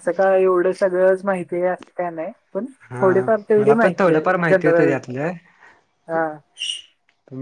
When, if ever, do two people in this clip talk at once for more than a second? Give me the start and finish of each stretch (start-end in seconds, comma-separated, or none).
2.9-5.0